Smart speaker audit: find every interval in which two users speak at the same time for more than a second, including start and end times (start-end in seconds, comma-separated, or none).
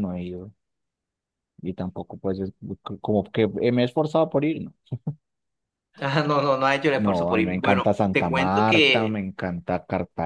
7.0-9.2